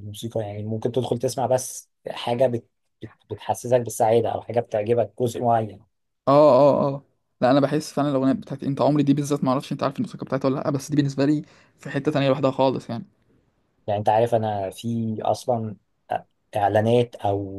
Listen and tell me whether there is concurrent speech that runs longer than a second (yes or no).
no